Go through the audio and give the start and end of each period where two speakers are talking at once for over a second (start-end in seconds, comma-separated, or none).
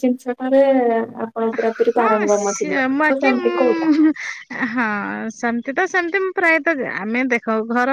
2.0-3.9